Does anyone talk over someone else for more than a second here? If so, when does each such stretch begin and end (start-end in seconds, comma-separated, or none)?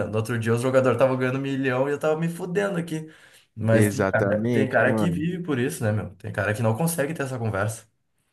3.7-5.2